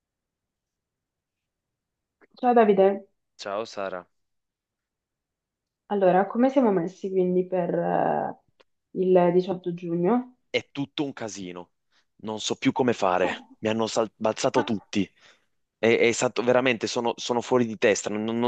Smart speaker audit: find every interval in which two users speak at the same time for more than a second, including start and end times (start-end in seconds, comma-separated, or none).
none